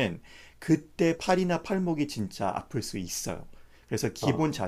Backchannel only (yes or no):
yes